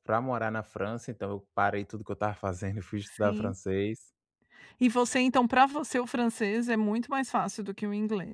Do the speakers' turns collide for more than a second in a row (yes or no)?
no